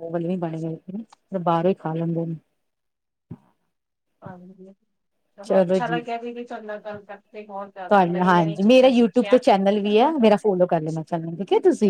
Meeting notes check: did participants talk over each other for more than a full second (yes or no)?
yes